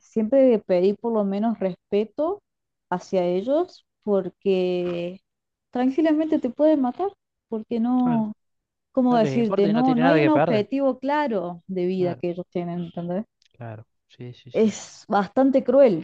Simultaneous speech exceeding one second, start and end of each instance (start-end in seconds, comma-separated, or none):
9.1-10.7